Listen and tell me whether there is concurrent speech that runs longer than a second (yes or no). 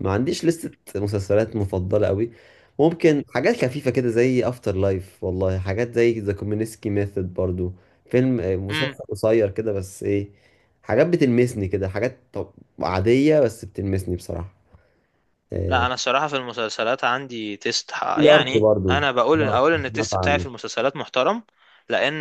yes